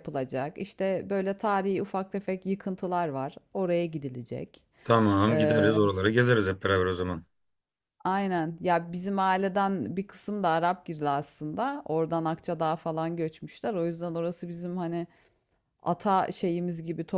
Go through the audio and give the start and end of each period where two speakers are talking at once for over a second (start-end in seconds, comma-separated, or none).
none